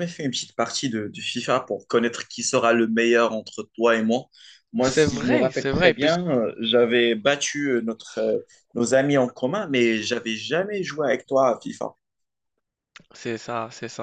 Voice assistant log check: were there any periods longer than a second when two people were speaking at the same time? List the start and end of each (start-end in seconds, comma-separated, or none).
4.8-6.2